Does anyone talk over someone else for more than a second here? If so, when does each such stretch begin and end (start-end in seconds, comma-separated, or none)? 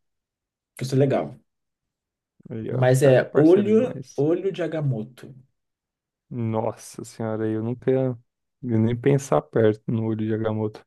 2.7-4.2